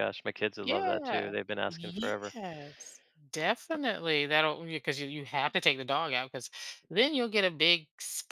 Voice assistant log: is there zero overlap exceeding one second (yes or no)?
no